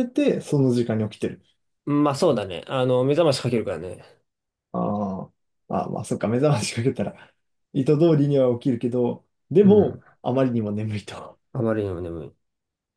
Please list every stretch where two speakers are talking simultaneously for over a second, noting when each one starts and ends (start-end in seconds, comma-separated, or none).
none